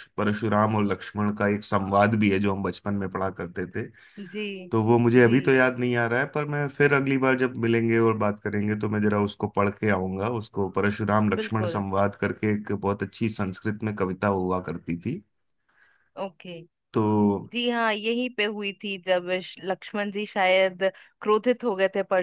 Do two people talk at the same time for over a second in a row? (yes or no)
no